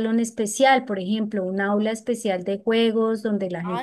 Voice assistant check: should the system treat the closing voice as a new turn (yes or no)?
yes